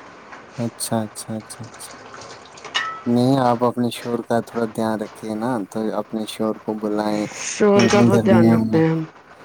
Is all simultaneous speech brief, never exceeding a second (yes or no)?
no